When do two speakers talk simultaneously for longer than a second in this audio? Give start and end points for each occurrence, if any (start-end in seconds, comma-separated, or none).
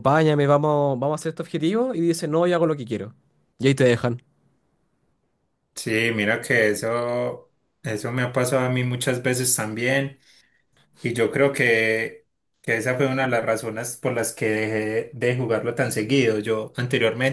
none